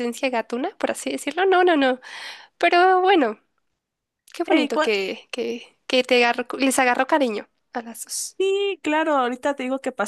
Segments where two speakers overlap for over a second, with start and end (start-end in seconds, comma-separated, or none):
none